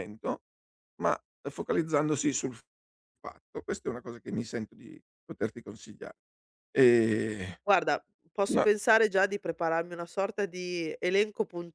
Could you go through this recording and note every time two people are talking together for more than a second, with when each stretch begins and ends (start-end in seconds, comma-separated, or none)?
none